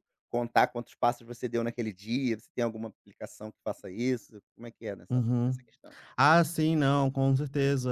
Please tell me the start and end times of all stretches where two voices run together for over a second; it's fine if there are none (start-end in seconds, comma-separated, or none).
none